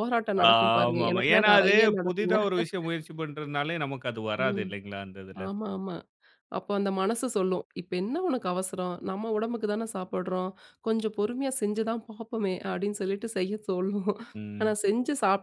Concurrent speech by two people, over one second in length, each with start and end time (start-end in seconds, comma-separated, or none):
0.5-2.4